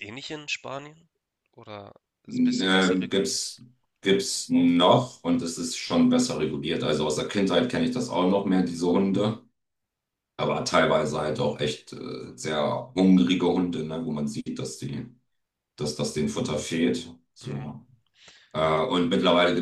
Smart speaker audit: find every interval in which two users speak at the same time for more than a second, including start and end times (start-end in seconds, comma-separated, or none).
2.3-3.5